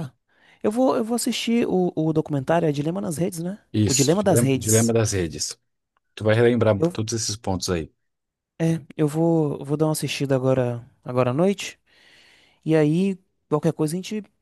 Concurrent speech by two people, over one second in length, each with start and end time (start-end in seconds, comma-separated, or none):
3.7-5.0